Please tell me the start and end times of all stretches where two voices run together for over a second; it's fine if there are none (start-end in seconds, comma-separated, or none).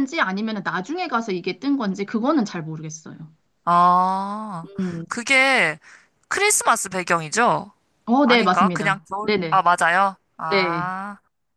8.2-9.6